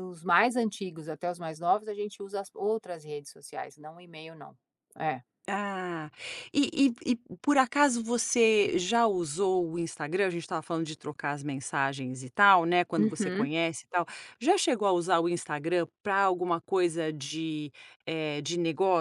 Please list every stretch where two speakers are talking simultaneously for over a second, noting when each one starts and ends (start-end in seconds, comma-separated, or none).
none